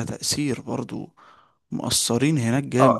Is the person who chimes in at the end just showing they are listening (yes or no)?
no